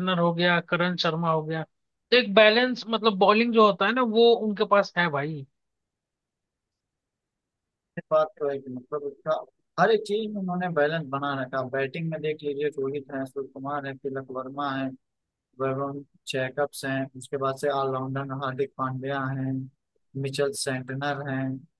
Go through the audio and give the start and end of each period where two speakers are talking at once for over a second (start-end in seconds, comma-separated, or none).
none